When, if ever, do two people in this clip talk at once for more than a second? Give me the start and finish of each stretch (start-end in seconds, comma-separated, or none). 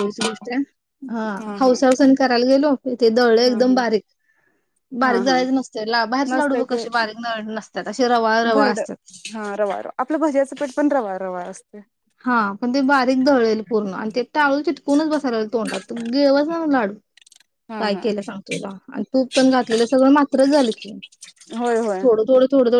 none